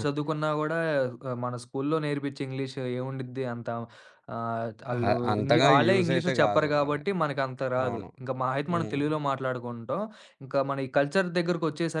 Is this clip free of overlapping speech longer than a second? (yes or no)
no